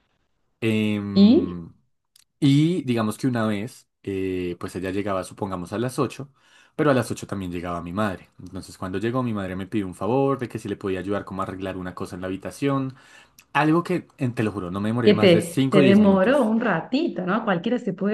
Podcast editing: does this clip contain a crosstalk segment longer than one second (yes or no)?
yes